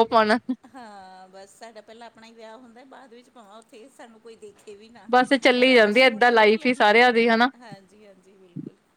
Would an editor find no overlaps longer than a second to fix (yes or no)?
no